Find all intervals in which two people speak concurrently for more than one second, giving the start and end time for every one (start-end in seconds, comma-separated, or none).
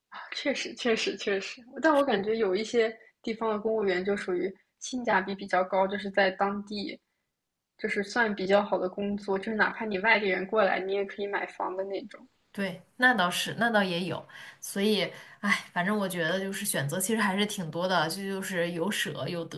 none